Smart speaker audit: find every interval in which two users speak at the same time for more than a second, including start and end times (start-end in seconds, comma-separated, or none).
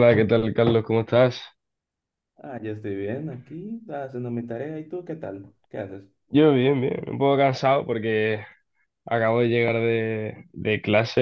none